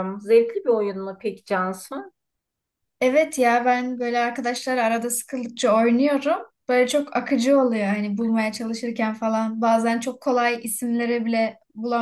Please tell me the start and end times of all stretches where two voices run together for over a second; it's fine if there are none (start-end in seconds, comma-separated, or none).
none